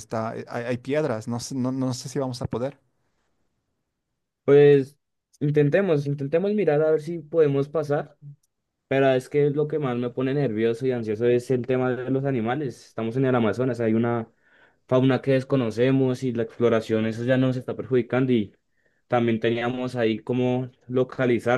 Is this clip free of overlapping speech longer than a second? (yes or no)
yes